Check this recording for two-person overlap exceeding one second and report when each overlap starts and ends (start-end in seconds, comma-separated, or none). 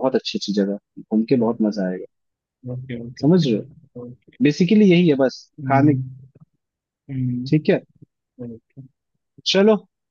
none